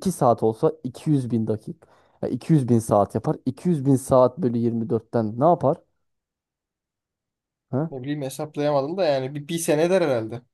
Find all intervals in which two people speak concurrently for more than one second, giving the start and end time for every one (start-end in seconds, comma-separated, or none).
none